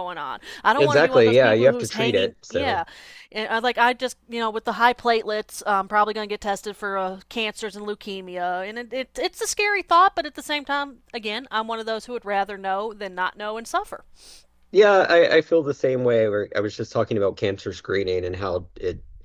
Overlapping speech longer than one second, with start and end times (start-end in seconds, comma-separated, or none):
0.8-2.8